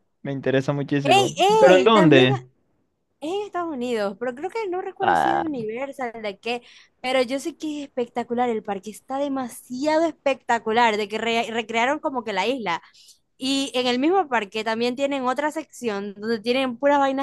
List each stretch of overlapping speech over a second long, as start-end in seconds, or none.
1.0-2.4